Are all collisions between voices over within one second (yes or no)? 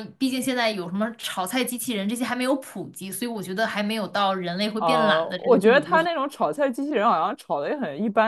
no